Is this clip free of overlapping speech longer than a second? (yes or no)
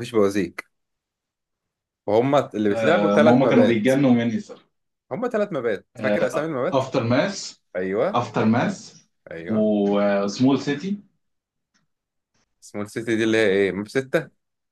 no